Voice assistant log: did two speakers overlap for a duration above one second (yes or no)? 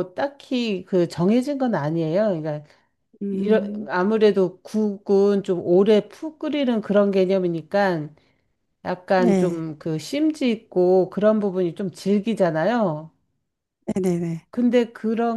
no